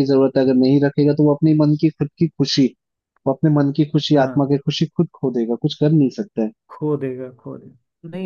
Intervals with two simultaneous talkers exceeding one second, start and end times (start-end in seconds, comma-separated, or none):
none